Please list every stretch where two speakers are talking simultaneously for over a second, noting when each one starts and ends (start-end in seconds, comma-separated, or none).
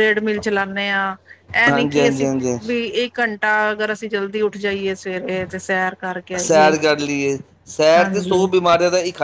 none